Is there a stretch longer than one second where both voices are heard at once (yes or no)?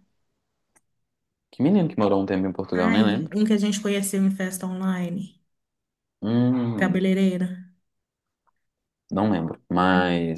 no